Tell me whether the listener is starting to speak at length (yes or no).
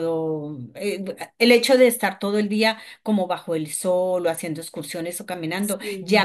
no